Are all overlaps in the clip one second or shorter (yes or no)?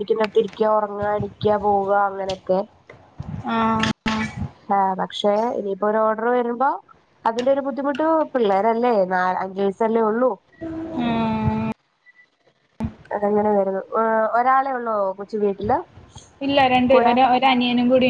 yes